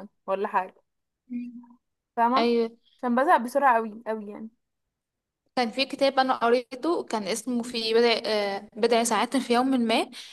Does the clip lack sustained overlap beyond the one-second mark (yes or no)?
yes